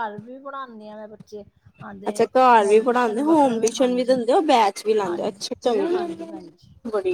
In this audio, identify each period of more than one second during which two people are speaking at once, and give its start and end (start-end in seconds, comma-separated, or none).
2.1-4.2